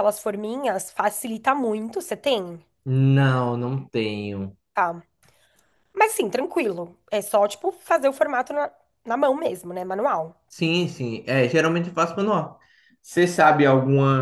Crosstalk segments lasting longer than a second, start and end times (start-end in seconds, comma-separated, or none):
none